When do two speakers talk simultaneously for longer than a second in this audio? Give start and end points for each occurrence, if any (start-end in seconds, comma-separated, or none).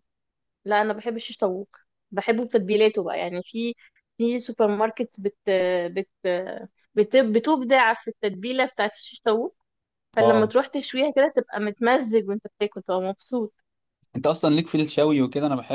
none